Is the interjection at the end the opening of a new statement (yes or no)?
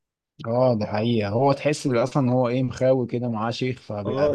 yes